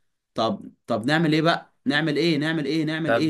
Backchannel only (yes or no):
no